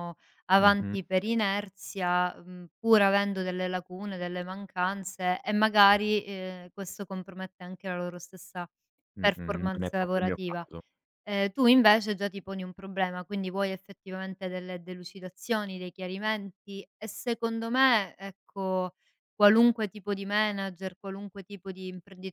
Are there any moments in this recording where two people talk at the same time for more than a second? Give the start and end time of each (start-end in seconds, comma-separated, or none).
9.2-10.6